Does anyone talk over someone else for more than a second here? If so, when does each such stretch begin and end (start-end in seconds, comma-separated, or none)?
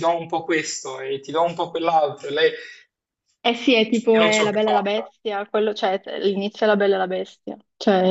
3.9-5.1